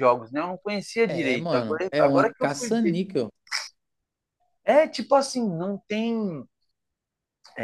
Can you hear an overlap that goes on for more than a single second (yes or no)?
yes